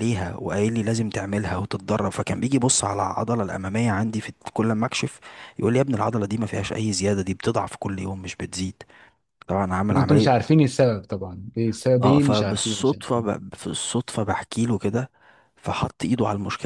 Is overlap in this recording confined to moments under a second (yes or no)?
no